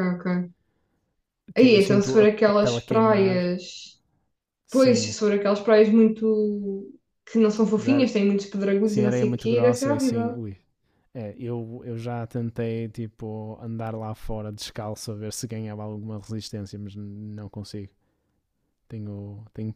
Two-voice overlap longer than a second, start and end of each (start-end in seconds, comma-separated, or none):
1.6-3.4, 8.8-10.4